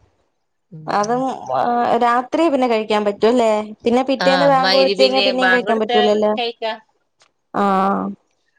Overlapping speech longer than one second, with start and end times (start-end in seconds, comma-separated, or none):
4.2-5.9